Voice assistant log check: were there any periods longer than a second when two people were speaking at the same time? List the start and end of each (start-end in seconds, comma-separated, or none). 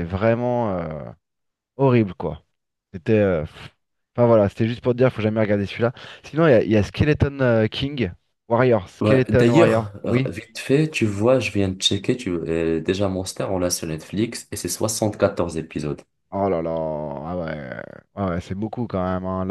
9.0-10.3